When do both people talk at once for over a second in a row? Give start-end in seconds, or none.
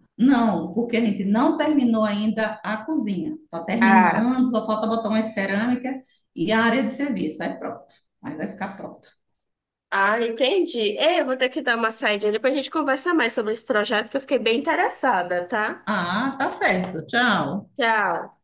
none